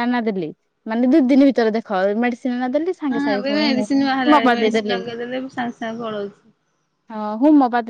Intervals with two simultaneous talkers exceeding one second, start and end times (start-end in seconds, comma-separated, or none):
3.1-5.0